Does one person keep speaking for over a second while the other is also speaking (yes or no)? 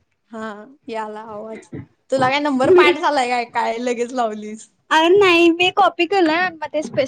no